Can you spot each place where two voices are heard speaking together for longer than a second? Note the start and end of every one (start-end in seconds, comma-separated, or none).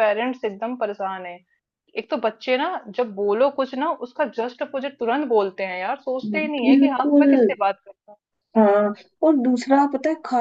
none